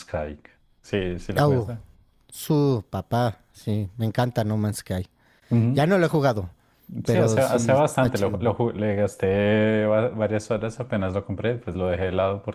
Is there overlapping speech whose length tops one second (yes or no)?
yes